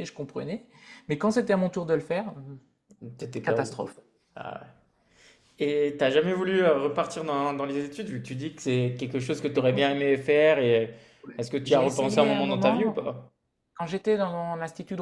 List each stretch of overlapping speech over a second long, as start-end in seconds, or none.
11.7-13.1